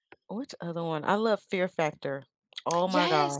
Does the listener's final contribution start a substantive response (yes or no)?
yes